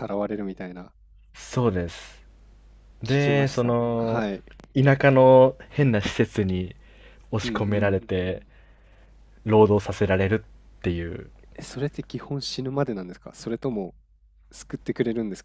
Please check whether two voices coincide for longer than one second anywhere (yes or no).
yes